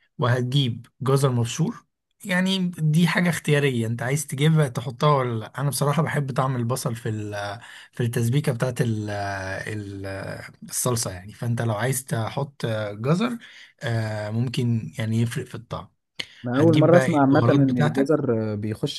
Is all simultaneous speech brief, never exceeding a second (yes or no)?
no